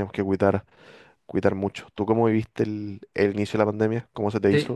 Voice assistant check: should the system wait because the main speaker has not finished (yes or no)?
no